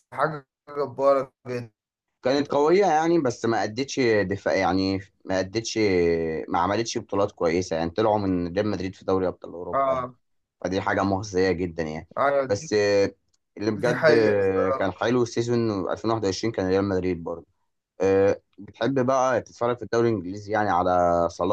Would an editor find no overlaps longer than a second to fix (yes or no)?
no